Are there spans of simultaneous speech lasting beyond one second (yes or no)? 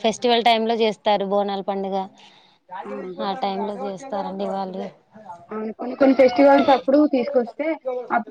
no